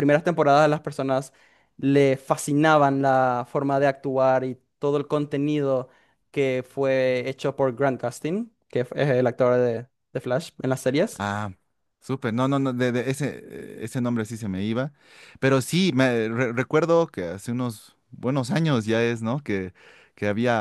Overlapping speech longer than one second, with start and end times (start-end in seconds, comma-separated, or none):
none